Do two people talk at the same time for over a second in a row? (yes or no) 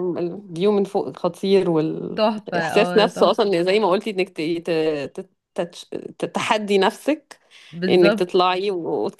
yes